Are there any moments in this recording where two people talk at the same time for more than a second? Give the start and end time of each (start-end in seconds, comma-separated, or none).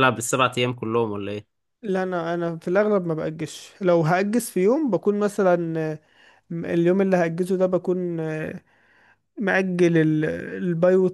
none